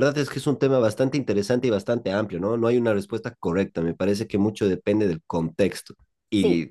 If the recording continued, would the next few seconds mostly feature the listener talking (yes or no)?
no